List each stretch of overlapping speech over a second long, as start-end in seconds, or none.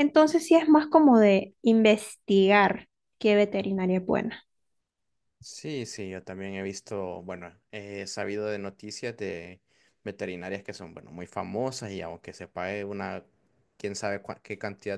none